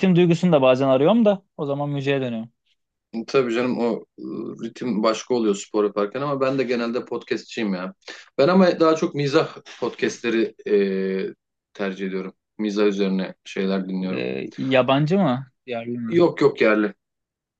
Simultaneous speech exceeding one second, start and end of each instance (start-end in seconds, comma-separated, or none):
none